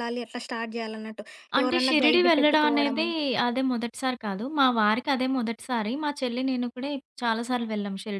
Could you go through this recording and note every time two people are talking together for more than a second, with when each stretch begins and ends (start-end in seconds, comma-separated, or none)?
1.6-3.1